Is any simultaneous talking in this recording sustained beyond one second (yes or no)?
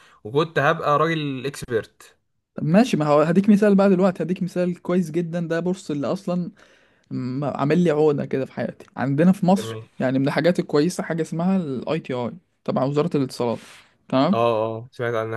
no